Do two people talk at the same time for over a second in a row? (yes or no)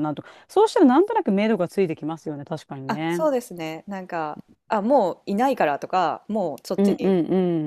no